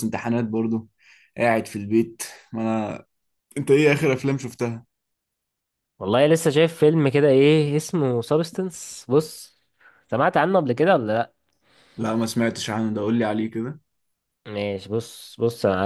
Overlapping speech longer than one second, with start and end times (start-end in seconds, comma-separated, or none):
none